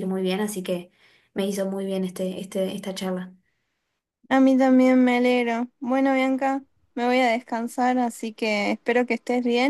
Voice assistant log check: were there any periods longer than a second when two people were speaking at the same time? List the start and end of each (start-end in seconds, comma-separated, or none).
none